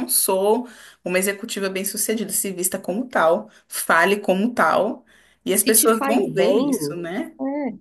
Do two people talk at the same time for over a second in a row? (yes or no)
yes